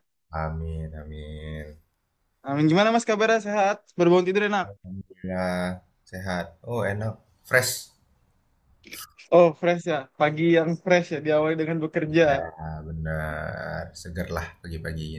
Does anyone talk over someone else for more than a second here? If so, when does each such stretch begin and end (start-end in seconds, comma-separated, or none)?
none